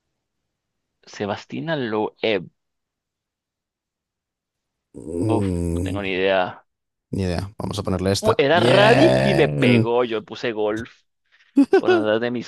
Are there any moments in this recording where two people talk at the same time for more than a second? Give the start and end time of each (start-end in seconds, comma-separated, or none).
8.2-9.9